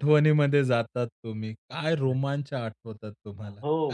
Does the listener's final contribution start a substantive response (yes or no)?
yes